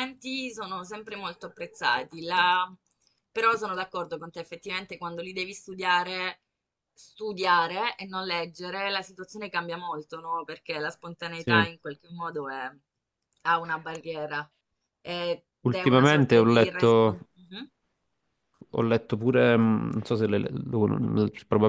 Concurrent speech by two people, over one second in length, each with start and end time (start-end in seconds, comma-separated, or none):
15.6-17.2